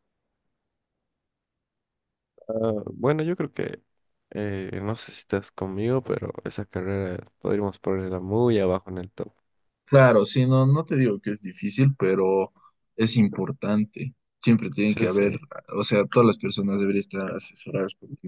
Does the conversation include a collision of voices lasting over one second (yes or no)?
no